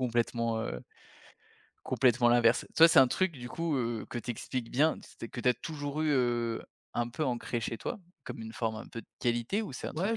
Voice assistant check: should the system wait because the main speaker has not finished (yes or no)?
no